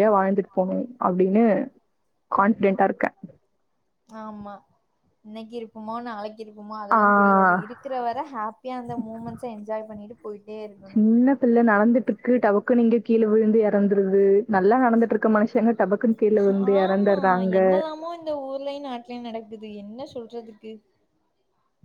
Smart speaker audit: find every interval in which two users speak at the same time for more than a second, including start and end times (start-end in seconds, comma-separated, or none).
none